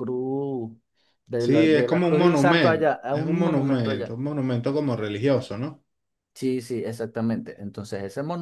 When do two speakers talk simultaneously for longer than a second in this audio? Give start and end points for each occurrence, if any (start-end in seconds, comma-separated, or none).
1.4-4.2